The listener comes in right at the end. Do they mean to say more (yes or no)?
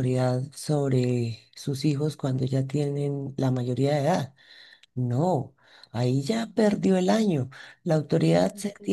no